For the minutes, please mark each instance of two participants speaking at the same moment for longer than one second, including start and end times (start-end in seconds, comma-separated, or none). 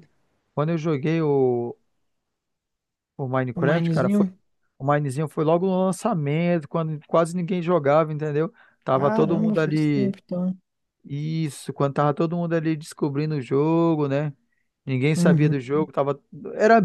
8.9-10.2